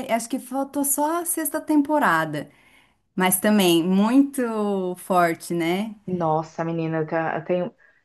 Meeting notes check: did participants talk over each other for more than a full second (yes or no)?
no